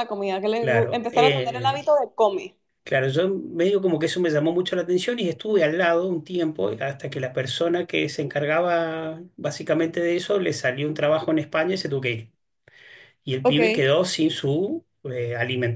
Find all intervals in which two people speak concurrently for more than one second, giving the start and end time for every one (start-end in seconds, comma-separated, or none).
0.6-1.9